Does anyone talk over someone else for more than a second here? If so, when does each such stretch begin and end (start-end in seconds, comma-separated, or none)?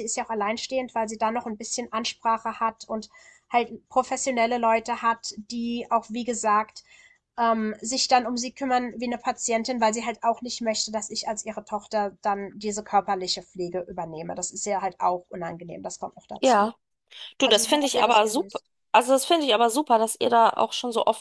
17.4-18.6